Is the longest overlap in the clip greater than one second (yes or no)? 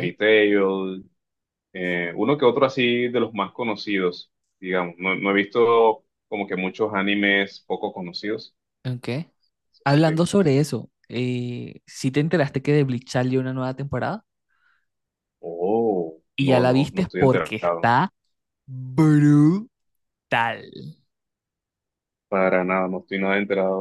yes